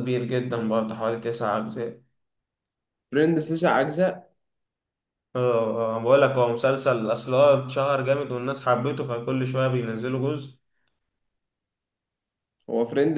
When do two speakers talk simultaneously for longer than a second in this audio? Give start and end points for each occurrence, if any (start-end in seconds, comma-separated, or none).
none